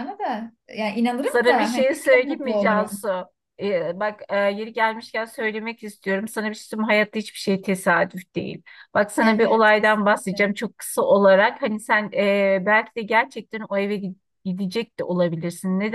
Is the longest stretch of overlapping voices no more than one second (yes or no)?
no